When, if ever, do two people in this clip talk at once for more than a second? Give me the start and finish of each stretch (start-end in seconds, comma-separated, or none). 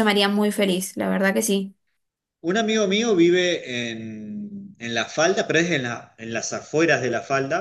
none